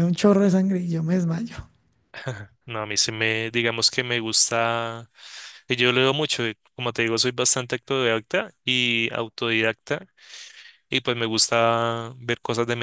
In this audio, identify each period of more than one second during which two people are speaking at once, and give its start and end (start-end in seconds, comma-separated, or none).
none